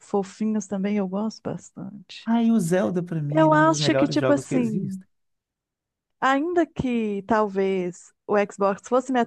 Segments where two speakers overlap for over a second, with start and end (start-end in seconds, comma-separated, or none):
3.3-5.0